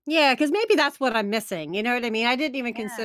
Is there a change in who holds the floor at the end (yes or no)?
no